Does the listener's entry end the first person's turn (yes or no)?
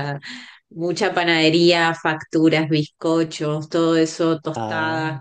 no